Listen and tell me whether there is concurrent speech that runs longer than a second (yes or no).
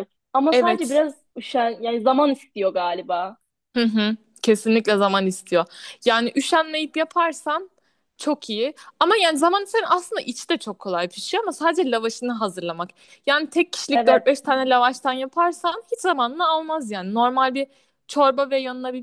no